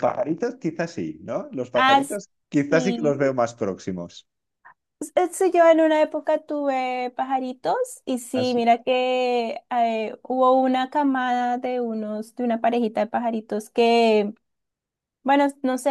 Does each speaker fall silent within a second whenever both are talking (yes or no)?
no